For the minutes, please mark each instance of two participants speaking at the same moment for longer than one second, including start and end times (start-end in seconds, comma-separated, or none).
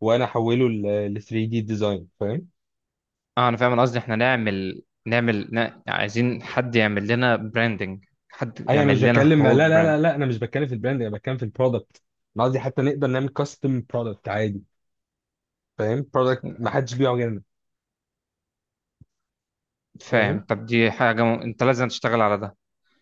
8.7-10.0